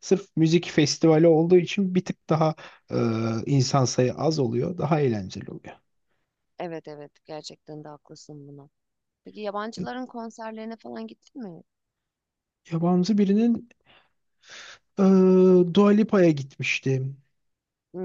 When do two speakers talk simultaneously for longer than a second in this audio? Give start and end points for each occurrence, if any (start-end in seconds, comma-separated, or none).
none